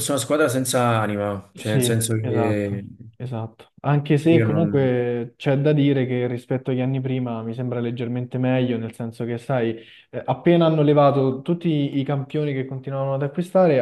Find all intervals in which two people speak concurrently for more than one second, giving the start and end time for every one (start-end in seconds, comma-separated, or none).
1.6-2.8